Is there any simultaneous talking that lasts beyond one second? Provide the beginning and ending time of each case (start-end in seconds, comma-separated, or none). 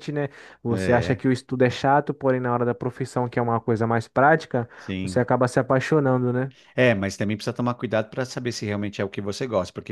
none